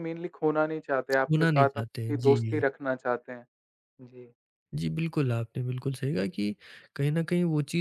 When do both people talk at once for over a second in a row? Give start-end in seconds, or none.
1.2-2.6